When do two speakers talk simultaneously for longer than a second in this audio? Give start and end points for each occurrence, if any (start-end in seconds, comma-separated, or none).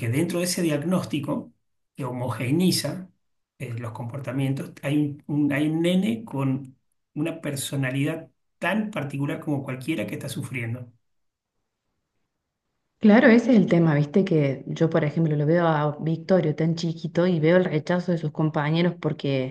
none